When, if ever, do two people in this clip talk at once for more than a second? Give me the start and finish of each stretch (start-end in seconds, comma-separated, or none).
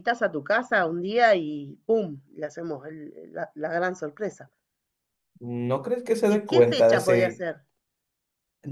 6.3-7.5